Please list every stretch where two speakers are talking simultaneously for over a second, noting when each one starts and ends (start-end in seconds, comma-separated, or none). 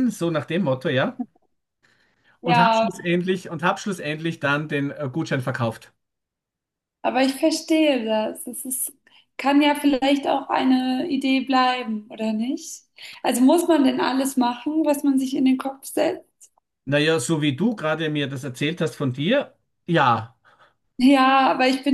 none